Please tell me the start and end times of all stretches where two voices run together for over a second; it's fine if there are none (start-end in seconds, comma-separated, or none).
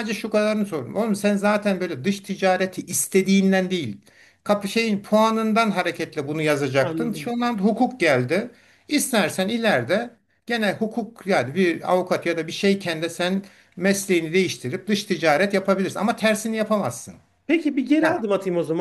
none